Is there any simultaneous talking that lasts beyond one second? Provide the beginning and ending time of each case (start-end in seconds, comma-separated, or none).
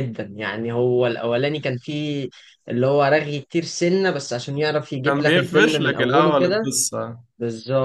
5.0-6.7